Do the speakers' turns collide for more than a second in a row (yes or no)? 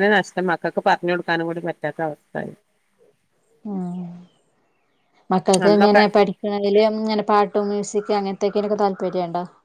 no